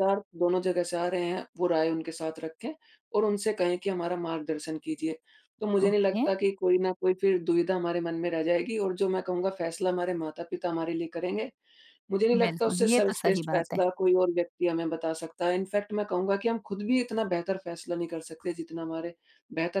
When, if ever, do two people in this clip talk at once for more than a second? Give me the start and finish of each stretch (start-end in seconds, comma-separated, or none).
12.3-13.8